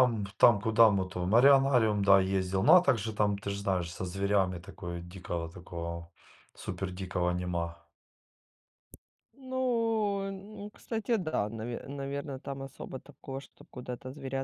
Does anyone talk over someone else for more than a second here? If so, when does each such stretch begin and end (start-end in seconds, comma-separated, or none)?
none